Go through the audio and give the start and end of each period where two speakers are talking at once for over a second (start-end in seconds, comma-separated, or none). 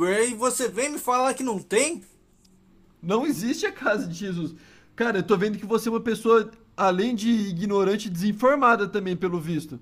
none